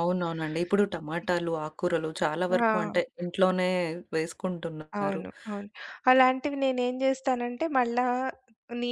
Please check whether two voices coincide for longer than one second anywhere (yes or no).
no